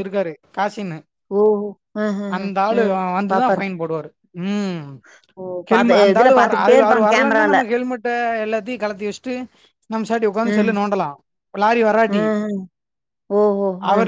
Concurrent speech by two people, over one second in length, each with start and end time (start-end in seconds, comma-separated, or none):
5.7-7.5